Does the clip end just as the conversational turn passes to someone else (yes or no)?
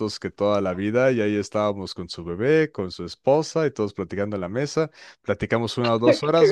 no